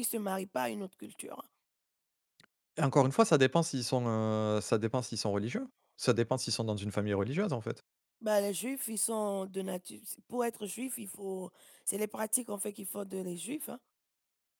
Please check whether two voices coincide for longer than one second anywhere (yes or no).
no